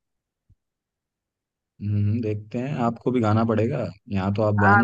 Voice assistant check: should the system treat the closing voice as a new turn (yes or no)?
yes